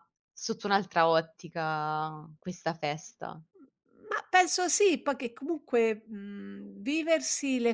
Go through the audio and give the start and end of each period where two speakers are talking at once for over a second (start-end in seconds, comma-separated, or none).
none